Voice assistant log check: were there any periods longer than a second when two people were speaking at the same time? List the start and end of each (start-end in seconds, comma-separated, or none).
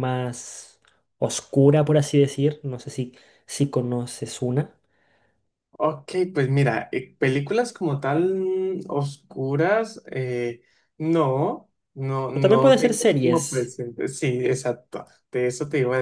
12.3-13.7